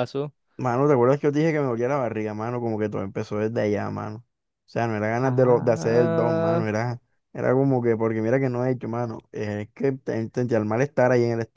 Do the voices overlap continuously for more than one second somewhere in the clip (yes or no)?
yes